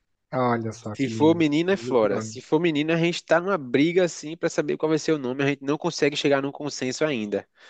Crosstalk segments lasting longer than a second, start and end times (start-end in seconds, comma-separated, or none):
0.9-2.4